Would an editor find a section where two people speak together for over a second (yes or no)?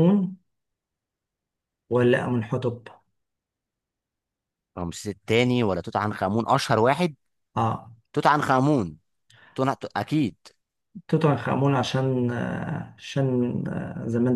no